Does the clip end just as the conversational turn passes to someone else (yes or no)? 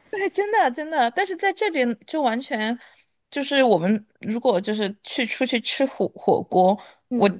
no